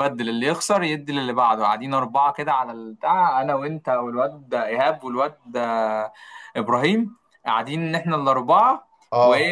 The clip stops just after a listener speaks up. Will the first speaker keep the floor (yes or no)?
yes